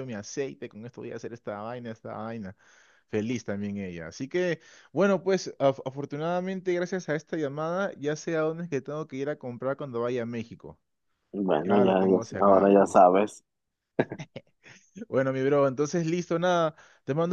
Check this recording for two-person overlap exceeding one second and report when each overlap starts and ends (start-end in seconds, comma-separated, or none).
11.6-13.1